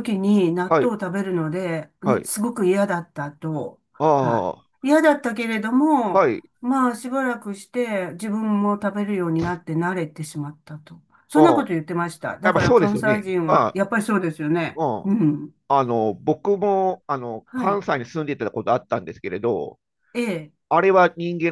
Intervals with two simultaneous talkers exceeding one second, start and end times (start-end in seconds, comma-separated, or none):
12.4-13.8